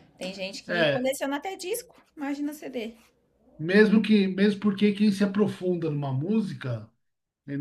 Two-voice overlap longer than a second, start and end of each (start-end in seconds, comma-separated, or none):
none